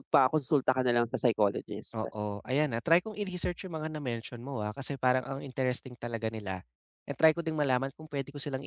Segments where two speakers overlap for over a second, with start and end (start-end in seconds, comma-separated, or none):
none